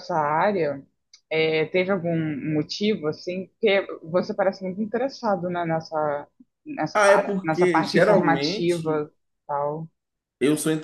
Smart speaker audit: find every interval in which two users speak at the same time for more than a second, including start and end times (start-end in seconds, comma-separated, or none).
6.9-9.1